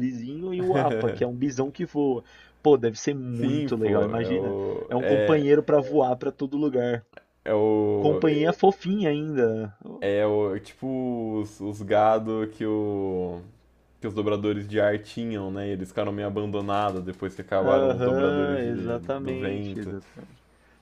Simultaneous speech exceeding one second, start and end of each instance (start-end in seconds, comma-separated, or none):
3.3-5.5, 17.7-19.8